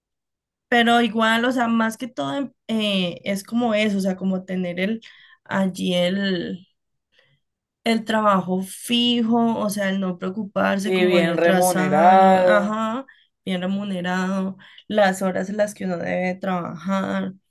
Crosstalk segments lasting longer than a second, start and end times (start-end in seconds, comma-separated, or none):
10.8-12.8